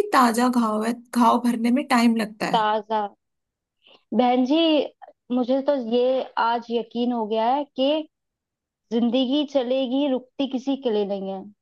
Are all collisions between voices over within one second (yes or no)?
yes